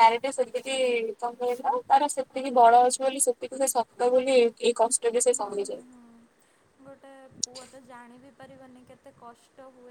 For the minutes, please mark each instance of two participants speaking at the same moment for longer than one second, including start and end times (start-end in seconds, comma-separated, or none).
none